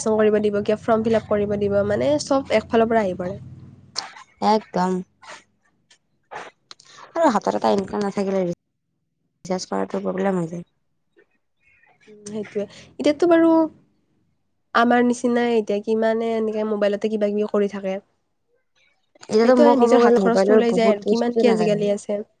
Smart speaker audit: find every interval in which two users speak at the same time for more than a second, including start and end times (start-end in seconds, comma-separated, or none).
19.4-21.8